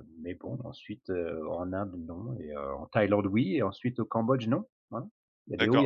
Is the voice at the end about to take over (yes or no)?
yes